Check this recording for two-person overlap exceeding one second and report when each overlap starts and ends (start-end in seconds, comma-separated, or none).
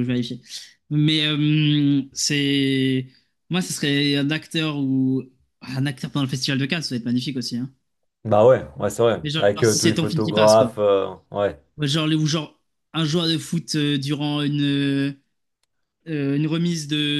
9.2-10.7